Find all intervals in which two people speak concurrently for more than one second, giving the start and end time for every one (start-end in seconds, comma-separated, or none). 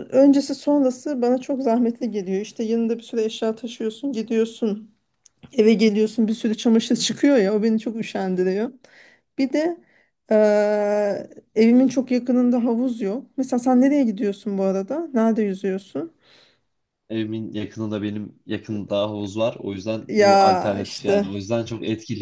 20.1-21.3